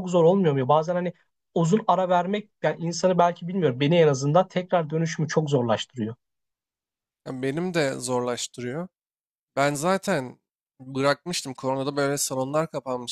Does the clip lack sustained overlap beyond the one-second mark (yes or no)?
yes